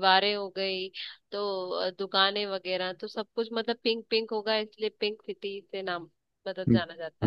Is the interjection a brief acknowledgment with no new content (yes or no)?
no